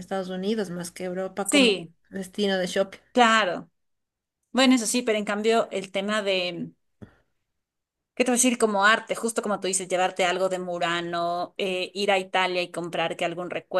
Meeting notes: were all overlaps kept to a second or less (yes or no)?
yes